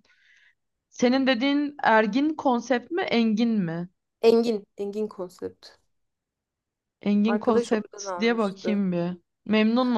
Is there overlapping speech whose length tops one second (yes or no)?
yes